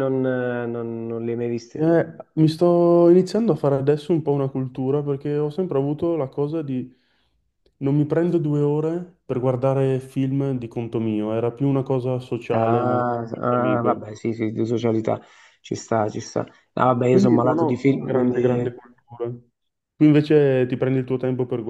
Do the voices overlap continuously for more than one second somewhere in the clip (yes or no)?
yes